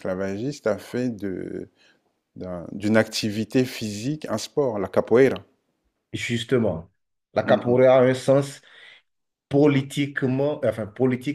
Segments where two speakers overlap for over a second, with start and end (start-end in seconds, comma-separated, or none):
none